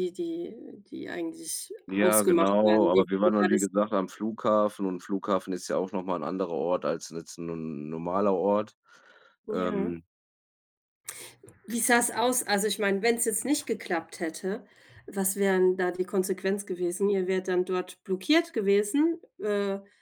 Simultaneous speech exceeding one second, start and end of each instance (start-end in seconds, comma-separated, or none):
1.9-3.7